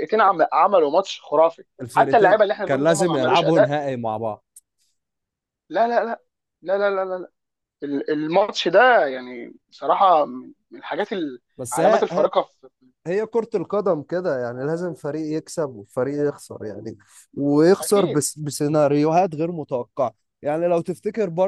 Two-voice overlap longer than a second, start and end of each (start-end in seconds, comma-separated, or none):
1.8-3.8